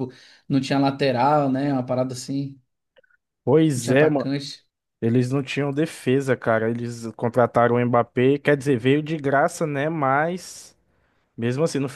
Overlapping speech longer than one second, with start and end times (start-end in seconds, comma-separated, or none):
none